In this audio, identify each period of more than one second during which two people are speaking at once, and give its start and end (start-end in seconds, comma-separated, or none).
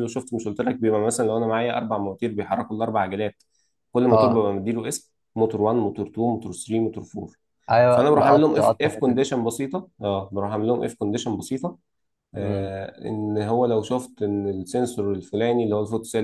7.9-9.3